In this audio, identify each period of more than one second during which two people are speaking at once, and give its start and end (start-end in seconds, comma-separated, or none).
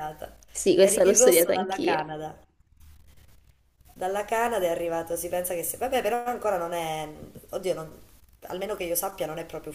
0.8-2.0